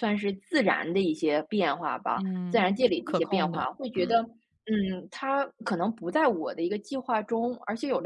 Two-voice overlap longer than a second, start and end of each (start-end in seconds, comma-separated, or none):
2.2-4.1